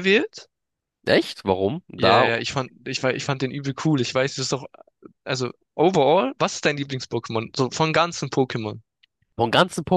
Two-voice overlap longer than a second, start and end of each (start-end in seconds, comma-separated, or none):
none